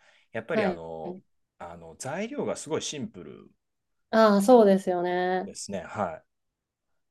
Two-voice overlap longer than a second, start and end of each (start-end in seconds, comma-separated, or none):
none